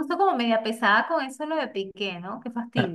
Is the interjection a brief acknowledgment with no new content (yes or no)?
no